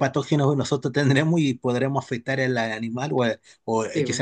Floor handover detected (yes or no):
no